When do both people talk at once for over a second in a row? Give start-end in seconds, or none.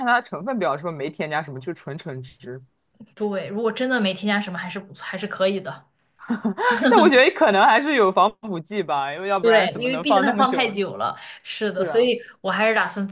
9.4-10.8